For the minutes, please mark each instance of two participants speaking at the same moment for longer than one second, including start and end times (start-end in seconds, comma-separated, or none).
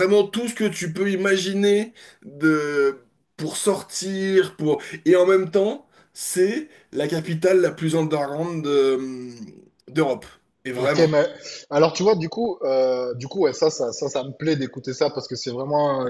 none